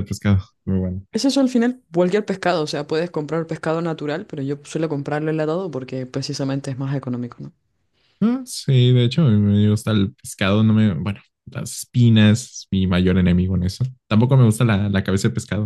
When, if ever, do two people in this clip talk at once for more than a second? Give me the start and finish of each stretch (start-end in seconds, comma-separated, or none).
none